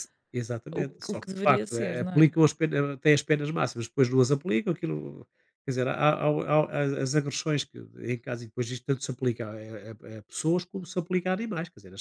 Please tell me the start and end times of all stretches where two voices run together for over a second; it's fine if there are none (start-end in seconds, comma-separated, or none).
0.7-2.3